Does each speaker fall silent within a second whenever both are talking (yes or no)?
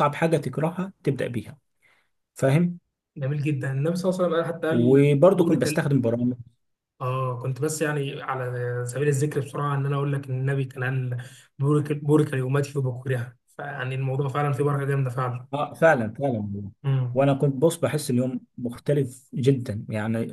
no